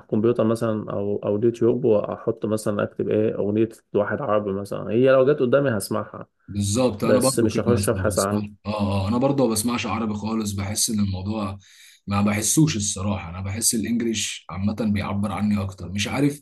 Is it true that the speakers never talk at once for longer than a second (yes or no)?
no